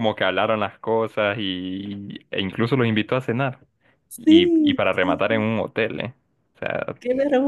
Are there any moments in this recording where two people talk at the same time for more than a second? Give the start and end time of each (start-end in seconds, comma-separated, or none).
4.2-5.5